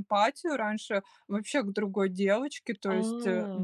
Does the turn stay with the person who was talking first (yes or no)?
yes